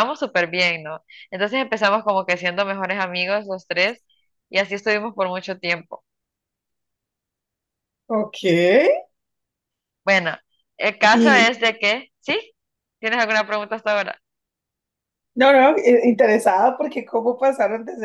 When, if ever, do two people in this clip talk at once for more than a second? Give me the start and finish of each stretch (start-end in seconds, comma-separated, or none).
none